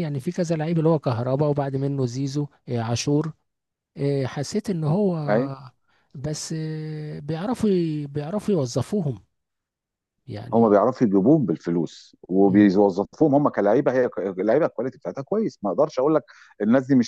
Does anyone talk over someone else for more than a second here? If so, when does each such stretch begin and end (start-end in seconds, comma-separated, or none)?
none